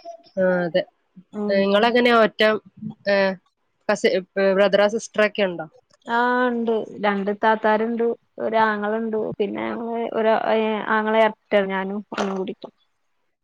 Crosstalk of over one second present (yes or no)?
no